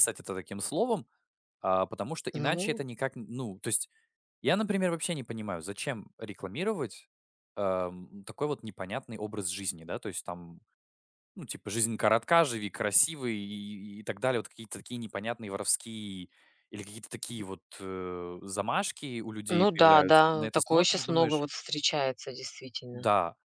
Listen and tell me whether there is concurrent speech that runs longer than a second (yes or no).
yes